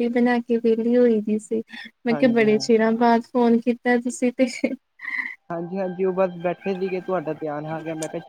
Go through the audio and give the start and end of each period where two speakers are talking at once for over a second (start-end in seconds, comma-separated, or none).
none